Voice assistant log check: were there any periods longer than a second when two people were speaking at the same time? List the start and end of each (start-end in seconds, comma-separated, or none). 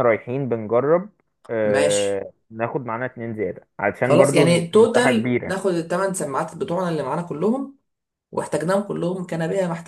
4.0-5.6